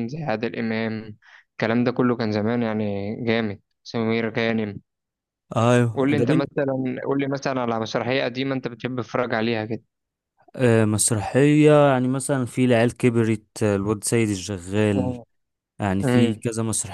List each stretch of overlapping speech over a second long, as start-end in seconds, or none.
none